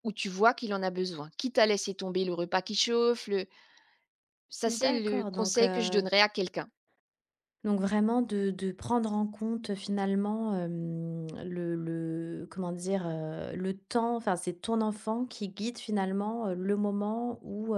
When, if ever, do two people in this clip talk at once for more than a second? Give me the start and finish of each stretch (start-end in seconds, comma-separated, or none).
4.7-6.0